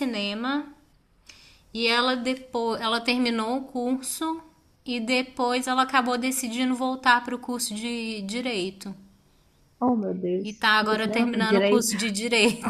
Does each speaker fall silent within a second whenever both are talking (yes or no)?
no